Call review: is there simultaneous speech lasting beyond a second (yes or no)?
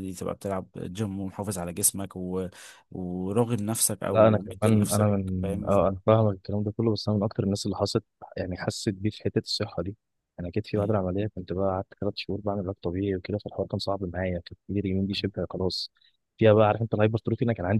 yes